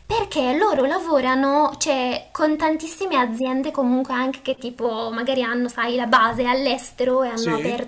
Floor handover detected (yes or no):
no